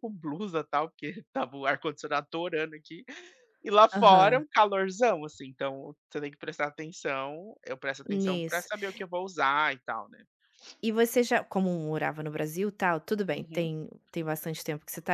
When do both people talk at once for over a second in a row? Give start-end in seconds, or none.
none